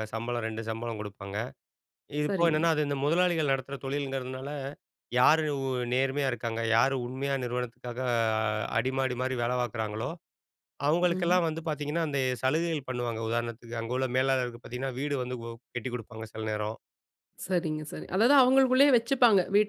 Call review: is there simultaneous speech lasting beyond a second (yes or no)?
no